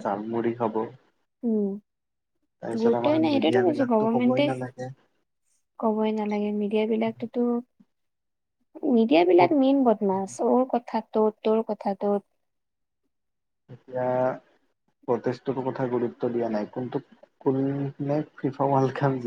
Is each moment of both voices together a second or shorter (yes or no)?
no